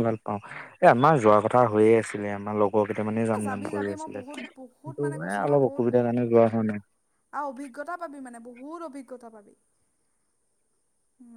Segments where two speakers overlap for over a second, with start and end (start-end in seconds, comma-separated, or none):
3.4-5.8